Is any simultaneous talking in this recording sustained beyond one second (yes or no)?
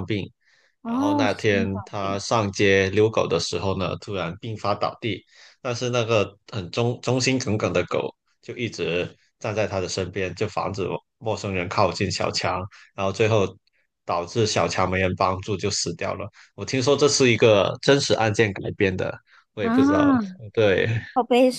yes